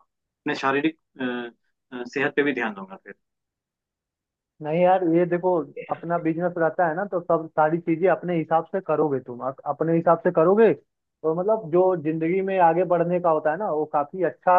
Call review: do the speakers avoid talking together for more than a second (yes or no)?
yes